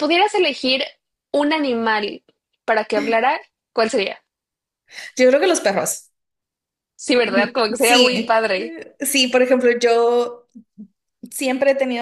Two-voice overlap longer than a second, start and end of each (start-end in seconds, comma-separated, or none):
7.2-8.8